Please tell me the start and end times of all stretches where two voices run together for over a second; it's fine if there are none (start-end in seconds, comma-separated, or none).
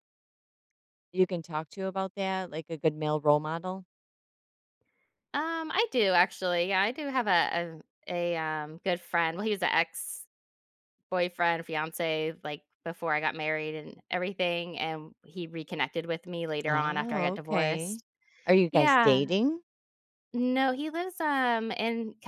16.7-18.0